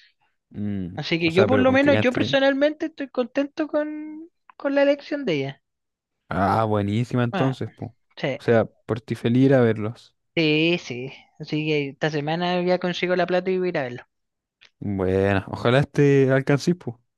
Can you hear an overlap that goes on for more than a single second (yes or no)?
yes